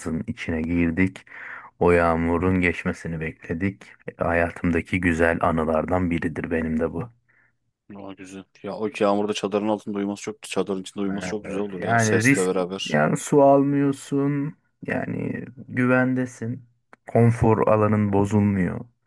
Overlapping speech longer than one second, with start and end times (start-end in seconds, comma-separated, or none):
11.4-13.0